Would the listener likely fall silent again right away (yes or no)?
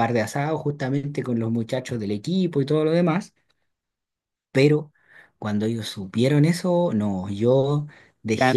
no